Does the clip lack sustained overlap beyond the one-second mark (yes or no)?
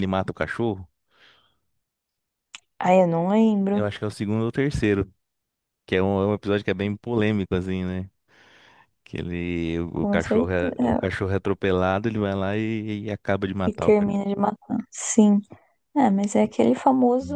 no